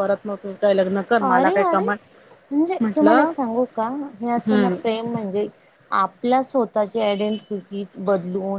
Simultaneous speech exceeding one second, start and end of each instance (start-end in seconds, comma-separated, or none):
none